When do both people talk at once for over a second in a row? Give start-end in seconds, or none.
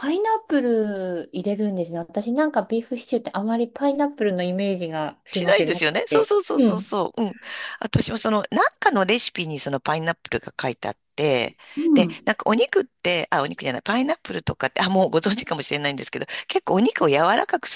5.3-6.8